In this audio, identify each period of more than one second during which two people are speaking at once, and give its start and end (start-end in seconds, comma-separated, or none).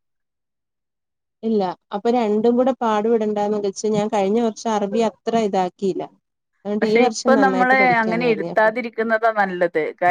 6.8-8.7